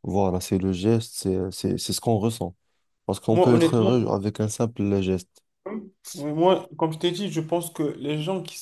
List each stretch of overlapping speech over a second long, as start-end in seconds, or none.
none